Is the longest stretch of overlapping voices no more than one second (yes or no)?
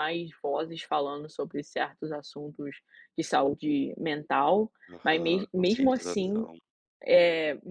no